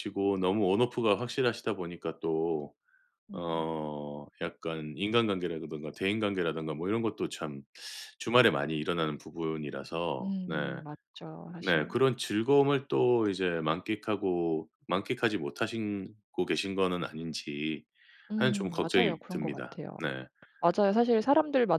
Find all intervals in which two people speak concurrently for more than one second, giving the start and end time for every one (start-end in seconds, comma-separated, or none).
18.4-20.0